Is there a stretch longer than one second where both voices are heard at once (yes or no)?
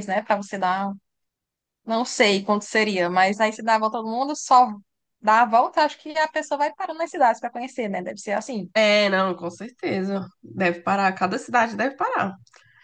no